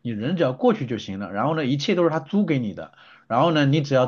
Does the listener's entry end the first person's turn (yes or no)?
no